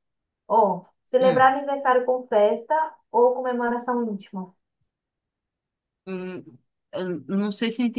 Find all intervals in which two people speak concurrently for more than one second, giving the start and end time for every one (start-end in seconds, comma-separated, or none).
none